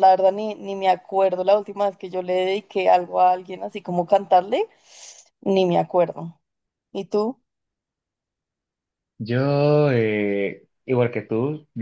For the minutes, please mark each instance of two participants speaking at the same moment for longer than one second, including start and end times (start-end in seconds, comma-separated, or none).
none